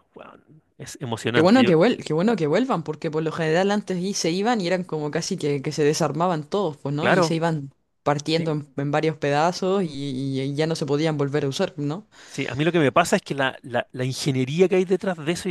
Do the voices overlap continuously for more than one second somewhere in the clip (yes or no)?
no